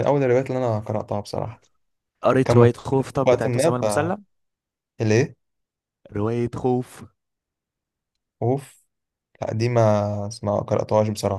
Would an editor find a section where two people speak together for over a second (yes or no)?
yes